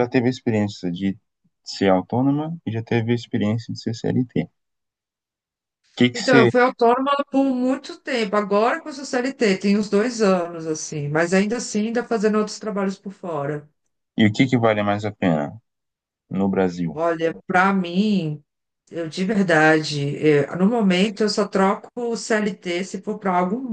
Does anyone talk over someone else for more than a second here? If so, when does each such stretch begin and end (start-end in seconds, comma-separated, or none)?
none